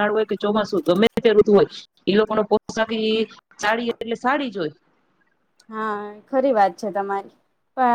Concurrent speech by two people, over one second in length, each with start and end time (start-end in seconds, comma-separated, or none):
none